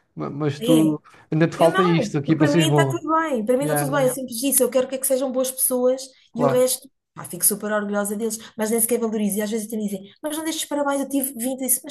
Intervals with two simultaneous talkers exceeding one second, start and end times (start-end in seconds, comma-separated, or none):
1.6-3.0